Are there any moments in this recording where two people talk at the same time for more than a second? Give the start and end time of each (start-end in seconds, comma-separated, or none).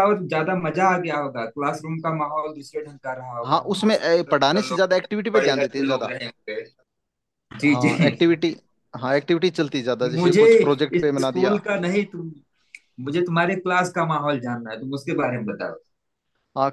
3.4-6.1